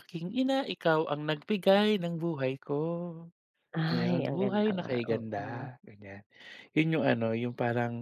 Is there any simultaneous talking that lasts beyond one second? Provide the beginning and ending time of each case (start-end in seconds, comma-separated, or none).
3.9-5.7